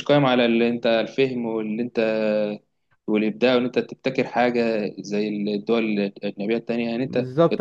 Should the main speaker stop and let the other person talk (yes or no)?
yes